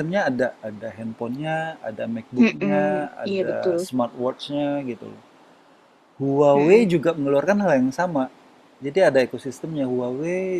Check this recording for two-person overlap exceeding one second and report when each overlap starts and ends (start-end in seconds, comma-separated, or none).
2.4-3.8